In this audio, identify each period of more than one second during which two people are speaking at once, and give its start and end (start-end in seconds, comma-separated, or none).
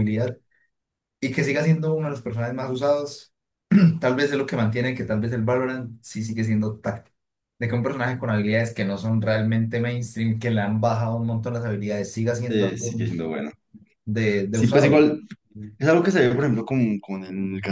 none